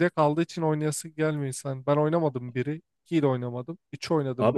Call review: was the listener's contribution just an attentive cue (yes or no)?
no